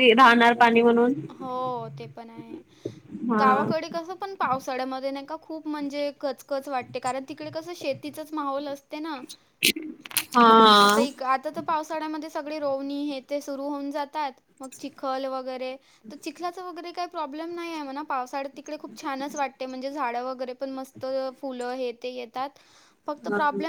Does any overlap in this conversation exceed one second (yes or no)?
no